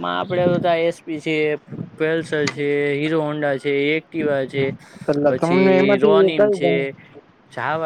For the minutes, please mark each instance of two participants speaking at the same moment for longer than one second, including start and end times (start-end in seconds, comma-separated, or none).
5.3-6.7